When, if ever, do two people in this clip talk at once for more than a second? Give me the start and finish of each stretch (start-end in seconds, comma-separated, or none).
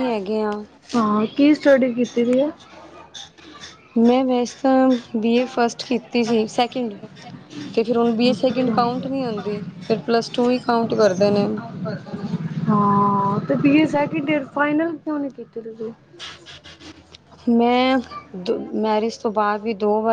none